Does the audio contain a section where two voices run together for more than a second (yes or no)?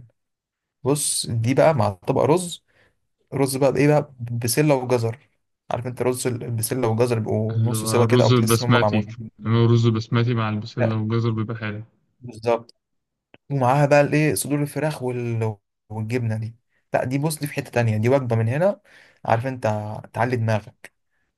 yes